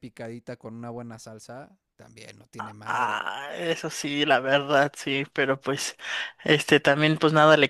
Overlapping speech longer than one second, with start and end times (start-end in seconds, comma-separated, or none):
none